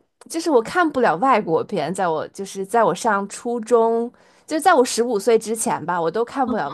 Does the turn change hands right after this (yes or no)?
no